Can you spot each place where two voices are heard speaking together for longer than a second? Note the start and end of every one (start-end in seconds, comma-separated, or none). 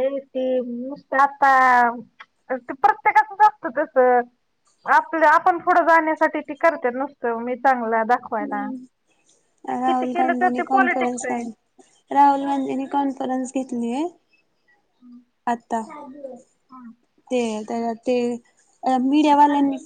9.8-11.4